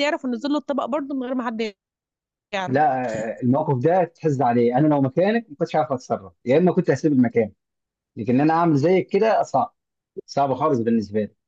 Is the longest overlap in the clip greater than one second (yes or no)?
no